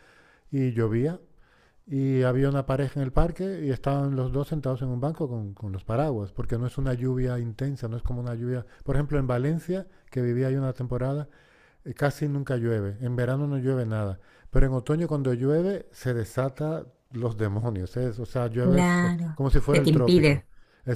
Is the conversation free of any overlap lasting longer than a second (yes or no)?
no